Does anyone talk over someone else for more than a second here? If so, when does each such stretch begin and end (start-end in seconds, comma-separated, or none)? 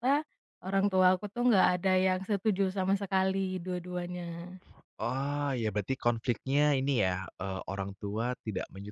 none